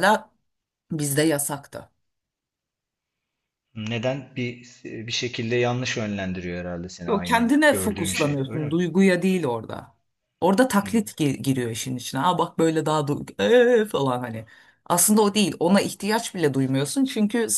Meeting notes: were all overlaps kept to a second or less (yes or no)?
no